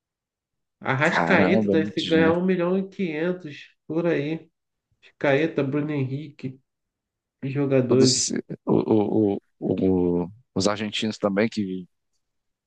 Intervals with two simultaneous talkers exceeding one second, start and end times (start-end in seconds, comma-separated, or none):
1.0-2.4